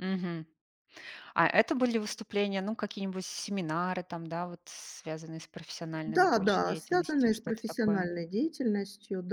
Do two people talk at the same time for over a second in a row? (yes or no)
yes